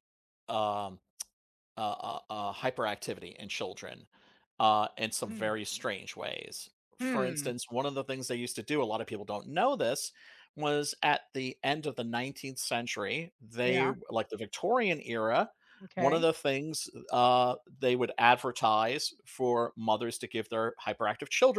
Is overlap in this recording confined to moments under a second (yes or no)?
yes